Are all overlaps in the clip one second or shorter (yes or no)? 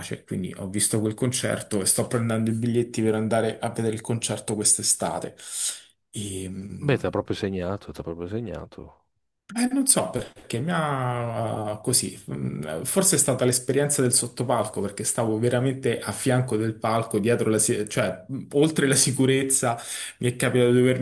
yes